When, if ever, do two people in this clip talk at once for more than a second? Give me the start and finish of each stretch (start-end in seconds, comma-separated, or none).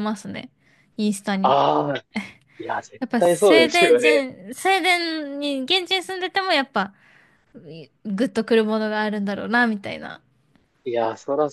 3.0-4.3